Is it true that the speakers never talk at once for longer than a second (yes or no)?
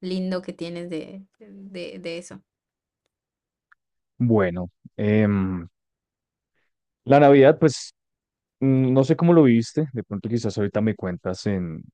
yes